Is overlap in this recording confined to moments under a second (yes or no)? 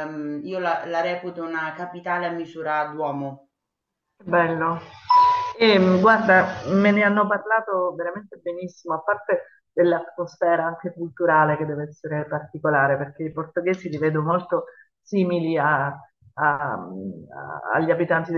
yes